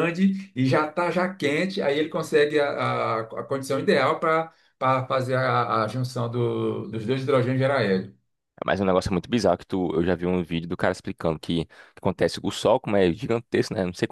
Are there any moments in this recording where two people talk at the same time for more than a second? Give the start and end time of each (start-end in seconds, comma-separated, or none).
none